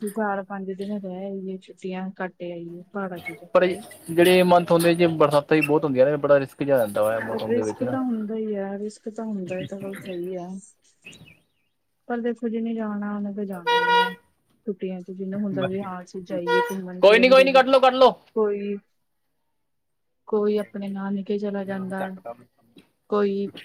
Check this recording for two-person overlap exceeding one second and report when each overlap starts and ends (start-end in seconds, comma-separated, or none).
none